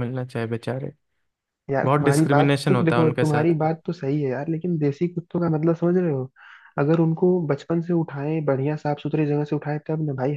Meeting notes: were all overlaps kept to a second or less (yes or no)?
no